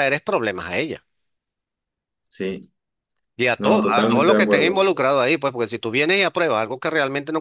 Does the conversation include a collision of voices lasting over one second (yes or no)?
yes